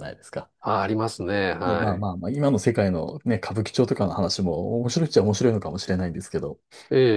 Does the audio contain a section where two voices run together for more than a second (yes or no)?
no